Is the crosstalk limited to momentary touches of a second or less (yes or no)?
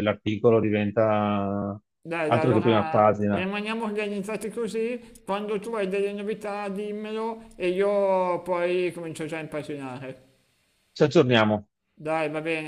no